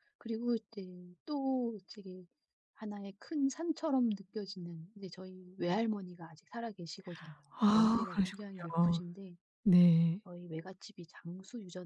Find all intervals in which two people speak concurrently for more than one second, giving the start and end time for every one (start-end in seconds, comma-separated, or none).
7.7-9.0